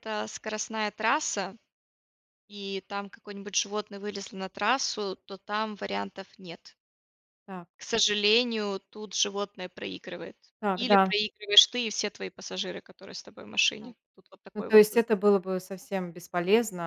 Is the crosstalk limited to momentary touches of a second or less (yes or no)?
yes